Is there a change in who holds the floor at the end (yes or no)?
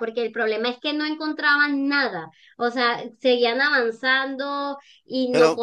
no